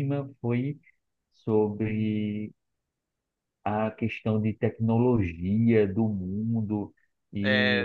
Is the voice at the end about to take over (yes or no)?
no